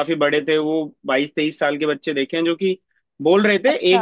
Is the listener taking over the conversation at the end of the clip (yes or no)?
no